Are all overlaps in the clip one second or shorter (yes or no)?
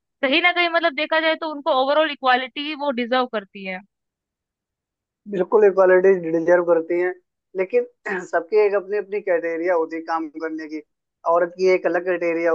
yes